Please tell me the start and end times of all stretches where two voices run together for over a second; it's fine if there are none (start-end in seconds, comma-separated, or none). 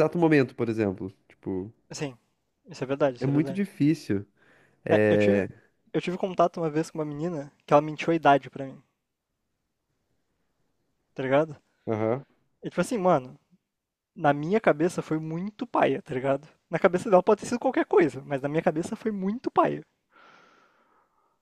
none